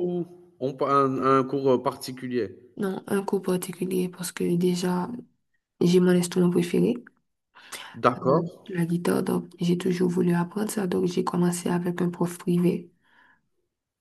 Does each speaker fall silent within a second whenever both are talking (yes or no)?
yes